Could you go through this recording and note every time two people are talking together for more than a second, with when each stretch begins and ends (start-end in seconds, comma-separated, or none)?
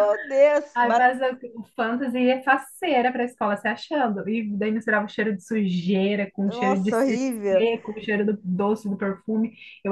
6.5-7.7